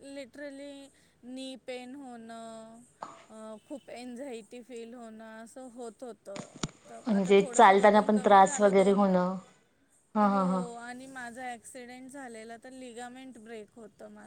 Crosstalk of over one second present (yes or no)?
yes